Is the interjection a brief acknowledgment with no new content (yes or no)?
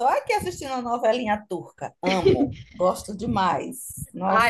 no